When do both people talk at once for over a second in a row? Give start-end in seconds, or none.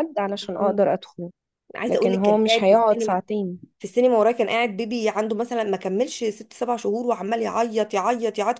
1.9-3.2